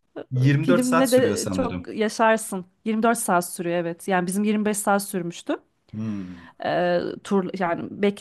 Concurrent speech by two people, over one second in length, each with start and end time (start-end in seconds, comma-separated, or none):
0.6-1.9